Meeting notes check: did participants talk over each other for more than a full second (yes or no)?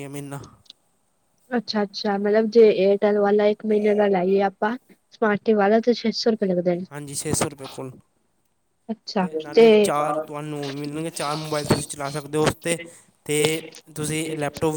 no